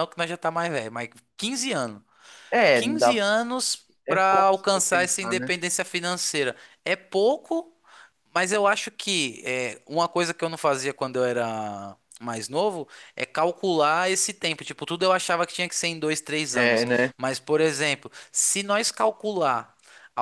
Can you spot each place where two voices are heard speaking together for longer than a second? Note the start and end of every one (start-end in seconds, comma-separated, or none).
4.1-5.5